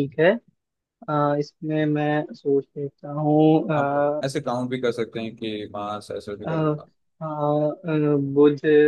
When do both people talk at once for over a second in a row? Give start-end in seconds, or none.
none